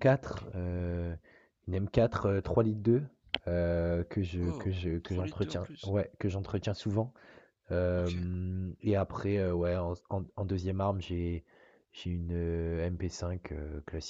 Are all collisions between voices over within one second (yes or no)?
no